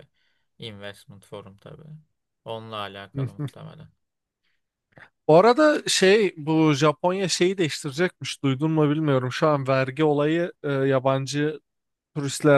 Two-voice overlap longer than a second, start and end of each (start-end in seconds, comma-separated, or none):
none